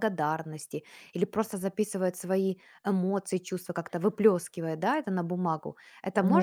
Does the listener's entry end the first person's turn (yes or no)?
yes